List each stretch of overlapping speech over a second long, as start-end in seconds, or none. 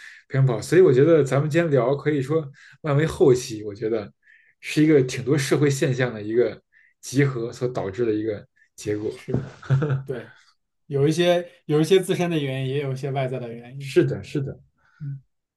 none